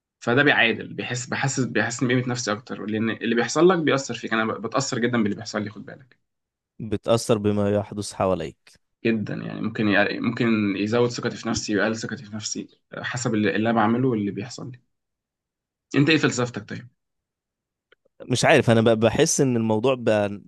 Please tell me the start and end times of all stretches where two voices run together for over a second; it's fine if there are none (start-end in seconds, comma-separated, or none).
none